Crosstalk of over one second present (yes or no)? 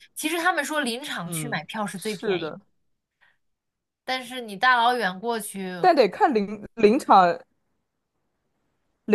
yes